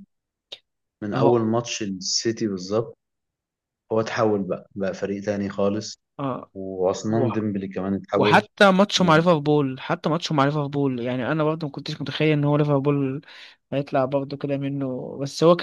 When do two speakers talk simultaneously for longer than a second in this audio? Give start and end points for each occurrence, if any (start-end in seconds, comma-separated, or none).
none